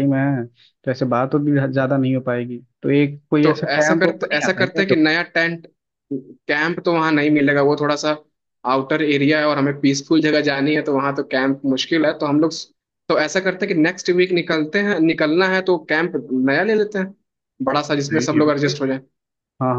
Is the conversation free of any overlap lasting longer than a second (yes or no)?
no